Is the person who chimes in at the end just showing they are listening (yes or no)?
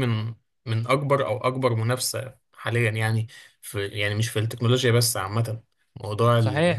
no